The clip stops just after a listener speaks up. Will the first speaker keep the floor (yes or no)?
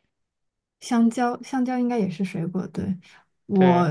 yes